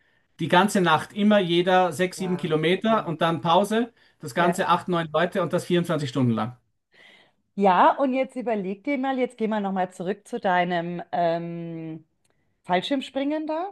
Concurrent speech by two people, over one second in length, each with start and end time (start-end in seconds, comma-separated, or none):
none